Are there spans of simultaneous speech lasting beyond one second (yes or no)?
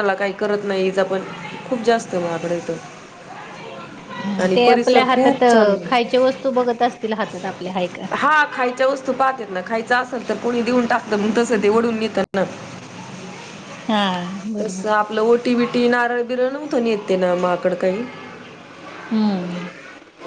yes